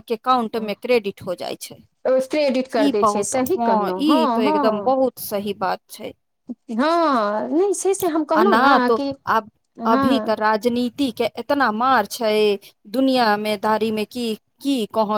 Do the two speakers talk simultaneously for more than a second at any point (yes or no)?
yes